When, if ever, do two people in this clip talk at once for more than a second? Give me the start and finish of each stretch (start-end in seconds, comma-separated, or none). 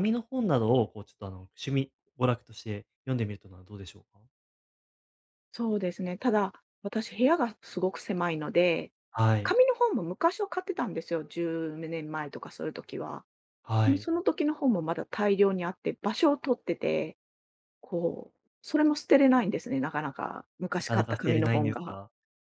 20.8-22.0